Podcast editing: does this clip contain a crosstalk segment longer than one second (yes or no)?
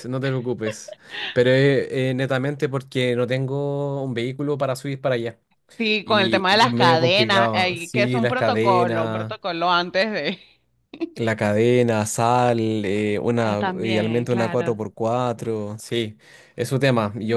yes